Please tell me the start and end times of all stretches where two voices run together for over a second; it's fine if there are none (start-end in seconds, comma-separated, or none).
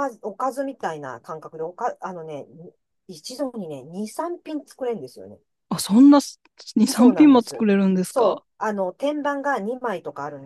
6.8-8.4